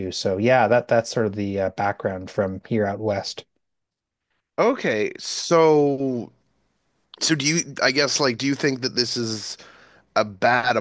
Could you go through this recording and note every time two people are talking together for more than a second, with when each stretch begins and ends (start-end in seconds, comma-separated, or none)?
none